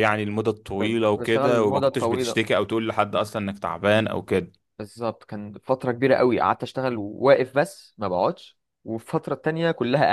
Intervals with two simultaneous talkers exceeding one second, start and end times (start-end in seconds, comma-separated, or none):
0.8-2.4